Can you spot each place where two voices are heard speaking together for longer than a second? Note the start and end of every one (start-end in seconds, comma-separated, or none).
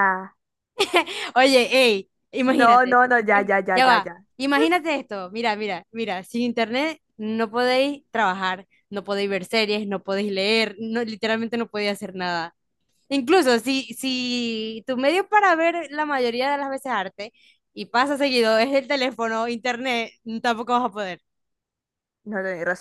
2.5-4.2